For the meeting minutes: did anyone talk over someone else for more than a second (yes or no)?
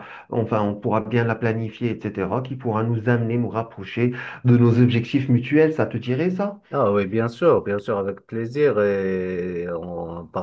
no